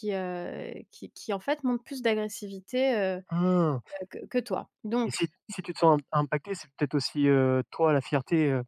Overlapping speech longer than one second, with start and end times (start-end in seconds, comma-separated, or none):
none